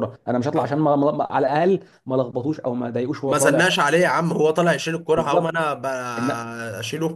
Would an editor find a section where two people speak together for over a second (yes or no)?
no